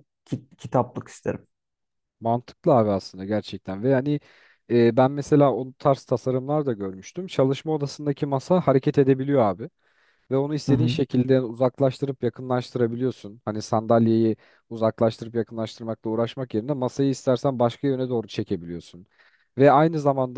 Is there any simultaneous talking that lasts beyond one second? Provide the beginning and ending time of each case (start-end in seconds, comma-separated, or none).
none